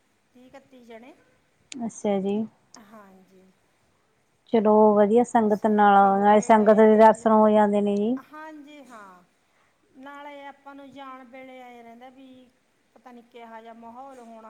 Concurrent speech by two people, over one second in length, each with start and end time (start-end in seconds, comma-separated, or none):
5.5-7.2